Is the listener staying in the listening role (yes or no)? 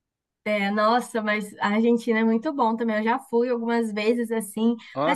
yes